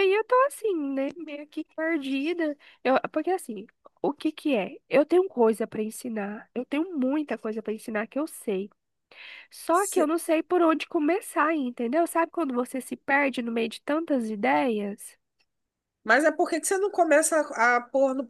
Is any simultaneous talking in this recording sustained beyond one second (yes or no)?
no